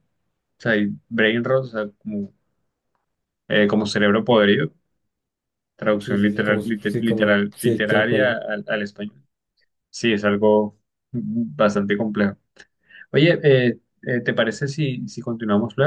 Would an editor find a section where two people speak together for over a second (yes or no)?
yes